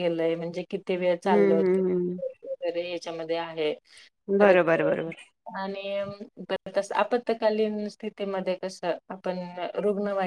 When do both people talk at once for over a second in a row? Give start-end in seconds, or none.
none